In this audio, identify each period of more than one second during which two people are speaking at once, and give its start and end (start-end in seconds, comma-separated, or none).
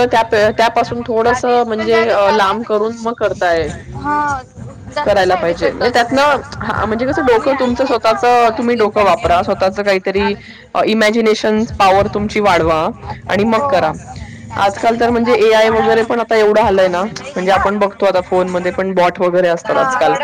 1.2-2.8, 5.0-6.4